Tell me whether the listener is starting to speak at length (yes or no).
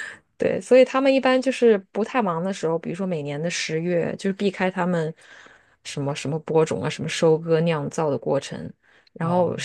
no